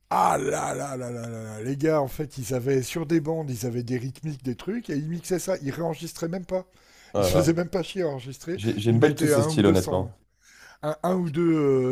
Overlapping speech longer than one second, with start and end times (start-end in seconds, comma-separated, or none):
8.6-10.1